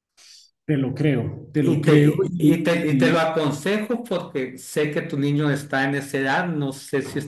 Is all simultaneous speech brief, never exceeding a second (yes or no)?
no